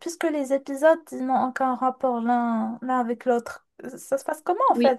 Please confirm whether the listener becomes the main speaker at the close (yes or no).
no